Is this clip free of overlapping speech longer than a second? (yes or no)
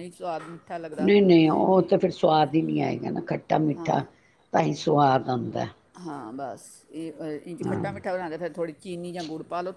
yes